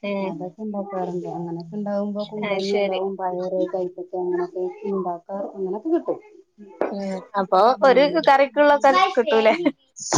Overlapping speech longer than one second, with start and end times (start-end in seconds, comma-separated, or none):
none